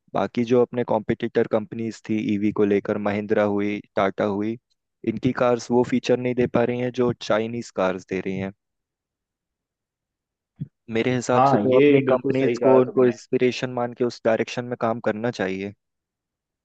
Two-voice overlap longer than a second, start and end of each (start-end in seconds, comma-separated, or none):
11.3-13.1